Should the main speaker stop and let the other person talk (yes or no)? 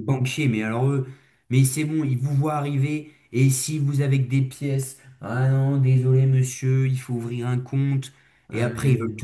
no